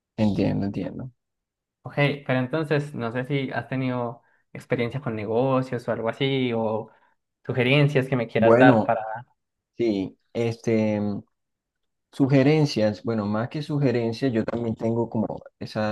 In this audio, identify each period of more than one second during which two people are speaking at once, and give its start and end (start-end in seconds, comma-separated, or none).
none